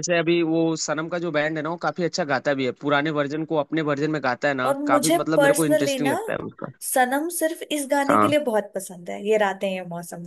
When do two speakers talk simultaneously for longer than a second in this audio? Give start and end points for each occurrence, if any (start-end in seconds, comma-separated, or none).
4.7-6.1